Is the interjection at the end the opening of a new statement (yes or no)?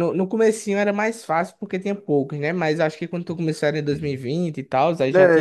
yes